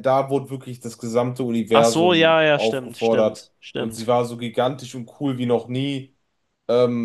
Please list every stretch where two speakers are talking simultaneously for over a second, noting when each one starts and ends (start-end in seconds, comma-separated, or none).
1.7-4.1